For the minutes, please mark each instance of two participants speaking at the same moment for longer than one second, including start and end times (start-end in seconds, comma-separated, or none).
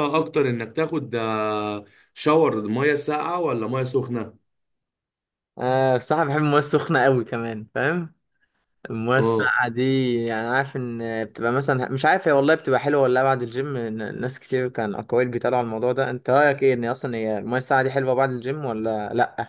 none